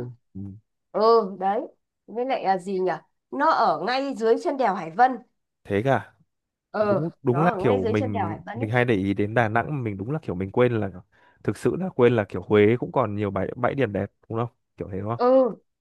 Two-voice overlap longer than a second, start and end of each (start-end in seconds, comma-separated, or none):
6.8-8.7